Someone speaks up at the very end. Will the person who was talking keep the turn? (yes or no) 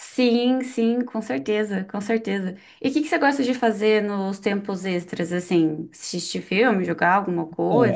no